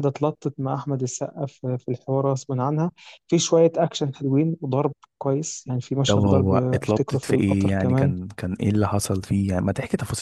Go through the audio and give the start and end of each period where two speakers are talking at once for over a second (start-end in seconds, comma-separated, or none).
6.0-8.1